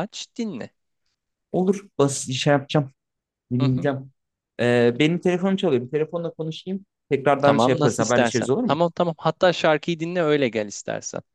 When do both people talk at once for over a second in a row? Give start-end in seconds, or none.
7.4-8.8